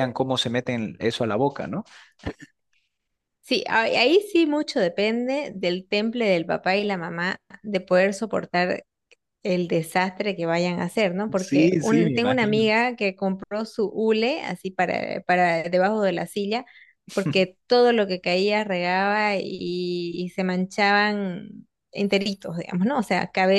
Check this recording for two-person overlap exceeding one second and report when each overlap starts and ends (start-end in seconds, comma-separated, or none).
11.3-12.7